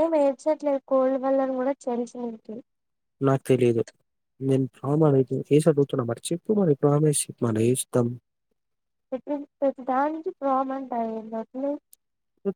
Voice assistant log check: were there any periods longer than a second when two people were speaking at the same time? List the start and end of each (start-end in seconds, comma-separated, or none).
none